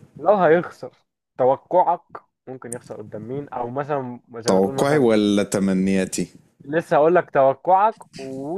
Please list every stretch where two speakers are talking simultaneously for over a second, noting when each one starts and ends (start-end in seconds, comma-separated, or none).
none